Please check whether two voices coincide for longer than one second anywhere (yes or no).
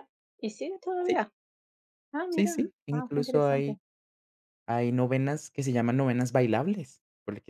yes